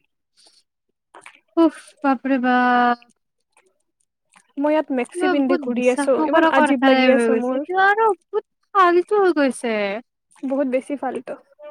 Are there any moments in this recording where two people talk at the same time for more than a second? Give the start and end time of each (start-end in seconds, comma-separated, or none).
5.1-7.6